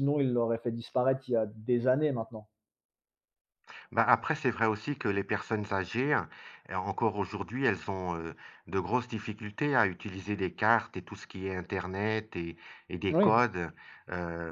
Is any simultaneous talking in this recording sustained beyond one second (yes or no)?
no